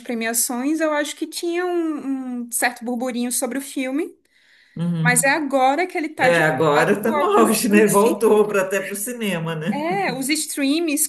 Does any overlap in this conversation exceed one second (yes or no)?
yes